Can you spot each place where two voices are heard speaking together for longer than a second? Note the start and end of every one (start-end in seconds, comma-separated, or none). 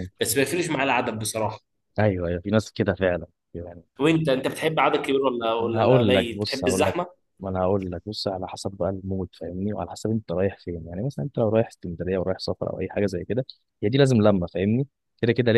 5.6-7.0